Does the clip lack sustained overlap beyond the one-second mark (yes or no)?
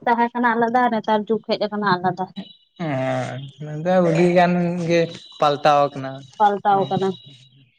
yes